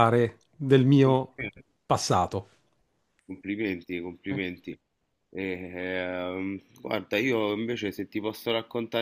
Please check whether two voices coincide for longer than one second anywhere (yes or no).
no